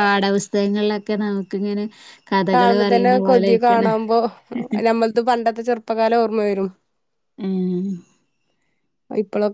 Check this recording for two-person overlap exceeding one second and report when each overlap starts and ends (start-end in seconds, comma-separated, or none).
2.5-3.9